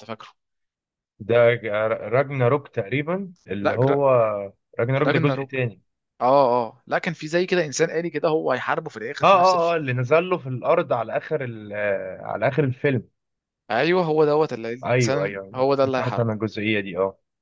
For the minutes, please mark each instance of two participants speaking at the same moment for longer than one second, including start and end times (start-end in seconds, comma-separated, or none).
14.8-16.4